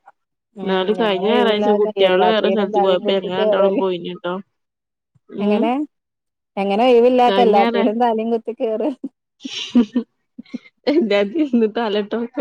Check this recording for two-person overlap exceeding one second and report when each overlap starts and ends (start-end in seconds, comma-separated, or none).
0.6-3.8